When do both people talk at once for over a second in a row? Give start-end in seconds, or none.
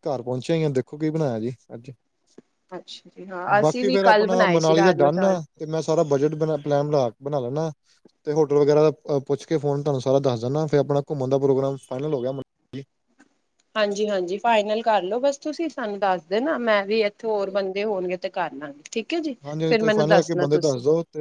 3.6-5.4